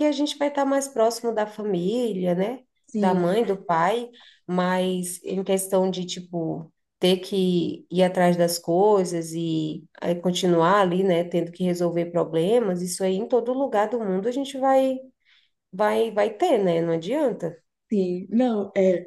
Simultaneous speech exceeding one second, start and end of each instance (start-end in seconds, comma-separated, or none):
none